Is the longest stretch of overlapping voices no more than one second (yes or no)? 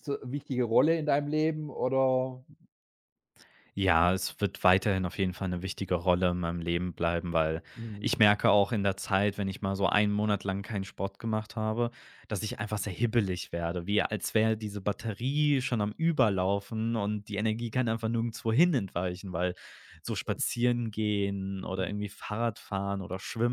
yes